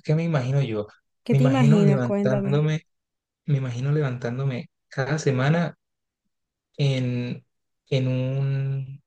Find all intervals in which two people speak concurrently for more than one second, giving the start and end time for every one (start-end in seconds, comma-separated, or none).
1.3-2.7